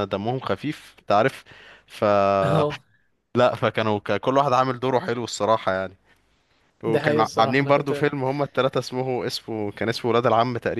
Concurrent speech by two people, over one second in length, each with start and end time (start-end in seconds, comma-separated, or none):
6.8-8.2